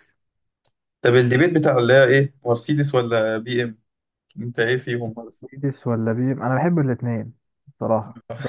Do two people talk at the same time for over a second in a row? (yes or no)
no